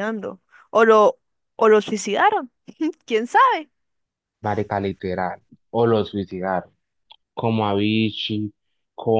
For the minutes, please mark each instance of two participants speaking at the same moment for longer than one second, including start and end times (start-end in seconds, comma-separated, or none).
none